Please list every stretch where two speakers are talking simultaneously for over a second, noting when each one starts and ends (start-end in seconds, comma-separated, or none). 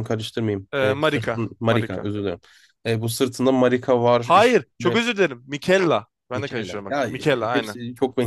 0.7-2.1, 6.3-7.8